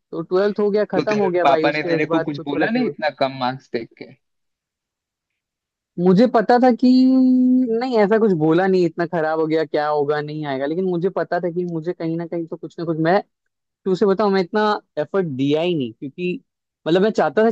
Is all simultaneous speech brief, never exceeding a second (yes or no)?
no